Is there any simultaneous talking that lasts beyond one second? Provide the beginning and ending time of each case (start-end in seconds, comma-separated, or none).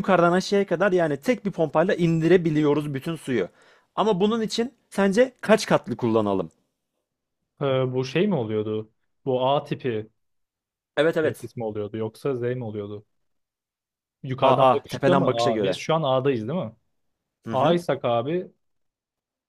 14.4-15.8